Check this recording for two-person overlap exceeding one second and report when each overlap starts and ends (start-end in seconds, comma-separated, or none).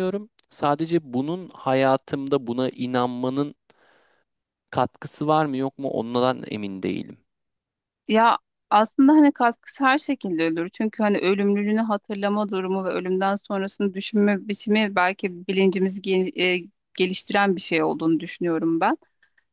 none